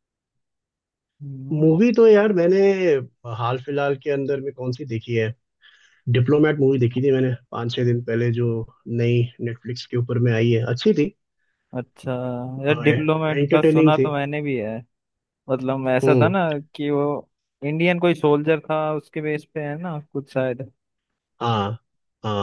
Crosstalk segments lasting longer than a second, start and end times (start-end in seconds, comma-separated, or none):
12.7-14.1